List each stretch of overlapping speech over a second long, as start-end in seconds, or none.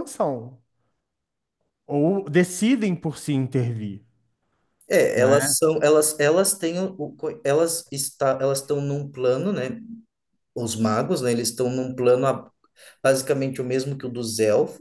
none